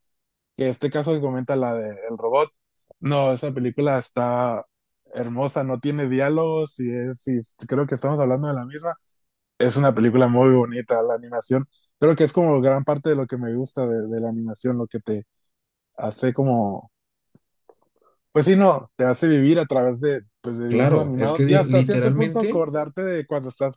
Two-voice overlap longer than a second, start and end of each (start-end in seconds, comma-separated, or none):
20.7-22.7